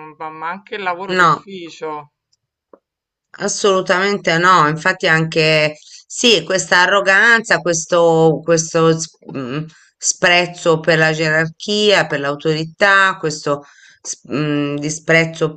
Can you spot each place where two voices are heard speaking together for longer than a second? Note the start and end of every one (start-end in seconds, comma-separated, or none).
none